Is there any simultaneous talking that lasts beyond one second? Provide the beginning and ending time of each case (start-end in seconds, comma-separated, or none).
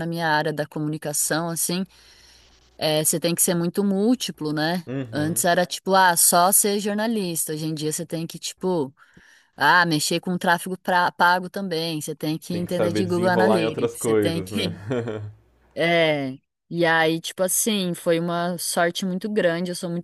12.5-14.7